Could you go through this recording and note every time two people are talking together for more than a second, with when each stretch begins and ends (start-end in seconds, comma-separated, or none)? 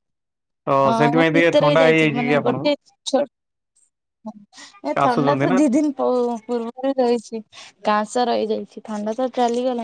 0.9-2.7